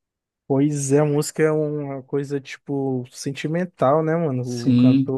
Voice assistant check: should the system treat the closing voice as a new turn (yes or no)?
yes